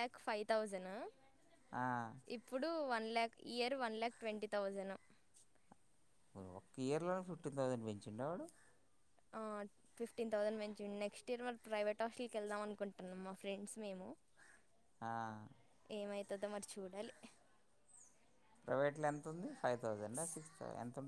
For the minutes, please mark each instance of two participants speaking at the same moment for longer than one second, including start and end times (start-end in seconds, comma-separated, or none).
none